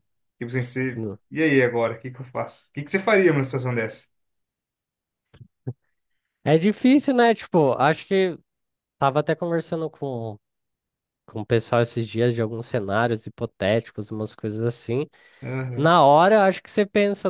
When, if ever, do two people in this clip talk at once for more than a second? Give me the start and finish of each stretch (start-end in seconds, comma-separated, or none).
none